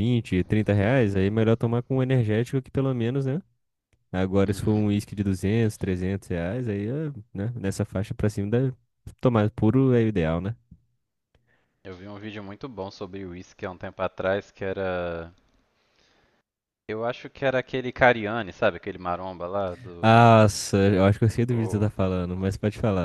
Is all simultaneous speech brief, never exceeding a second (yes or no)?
yes